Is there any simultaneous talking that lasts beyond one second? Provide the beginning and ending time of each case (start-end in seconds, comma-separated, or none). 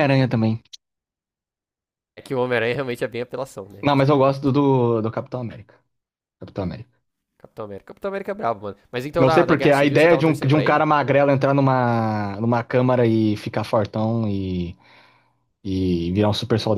9.2-10.9